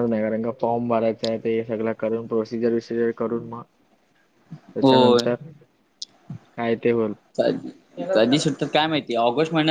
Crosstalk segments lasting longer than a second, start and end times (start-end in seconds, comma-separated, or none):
none